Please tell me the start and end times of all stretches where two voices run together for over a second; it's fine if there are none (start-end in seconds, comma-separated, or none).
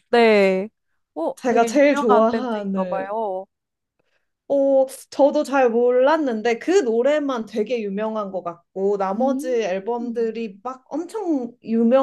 1.4-3.1, 9.2-10.4